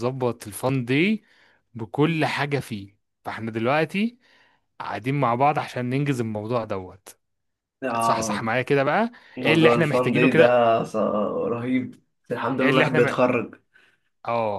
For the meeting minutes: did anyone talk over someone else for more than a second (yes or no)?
yes